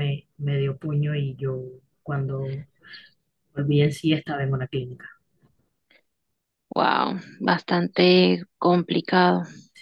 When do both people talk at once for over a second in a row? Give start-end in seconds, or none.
none